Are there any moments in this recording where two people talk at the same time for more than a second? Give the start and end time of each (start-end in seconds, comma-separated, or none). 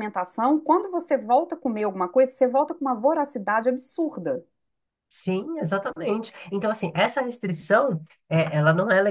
none